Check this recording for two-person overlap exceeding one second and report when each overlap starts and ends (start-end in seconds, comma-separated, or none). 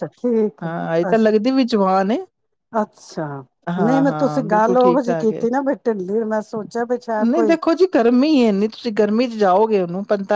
3.8-5.5